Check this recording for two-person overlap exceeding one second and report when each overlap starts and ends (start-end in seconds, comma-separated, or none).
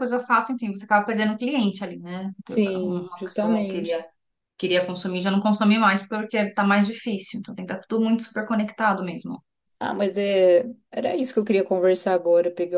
2.5-4.0